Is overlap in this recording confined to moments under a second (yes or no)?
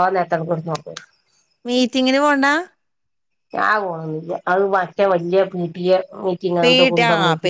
yes